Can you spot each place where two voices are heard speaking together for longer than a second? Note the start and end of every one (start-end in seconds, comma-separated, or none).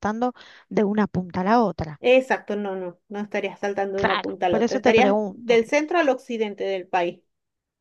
4.0-5.6